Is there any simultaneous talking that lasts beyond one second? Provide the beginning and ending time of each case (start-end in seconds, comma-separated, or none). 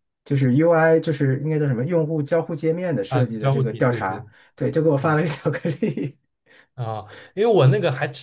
3.1-4.3